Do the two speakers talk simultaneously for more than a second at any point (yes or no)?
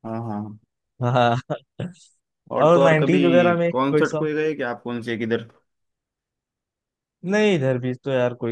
yes